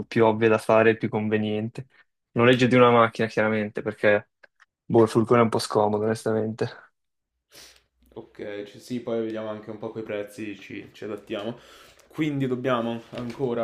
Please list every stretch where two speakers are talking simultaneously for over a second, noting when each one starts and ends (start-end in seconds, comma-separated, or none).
none